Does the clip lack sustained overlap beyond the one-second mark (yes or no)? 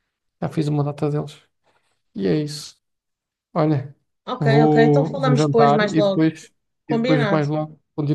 no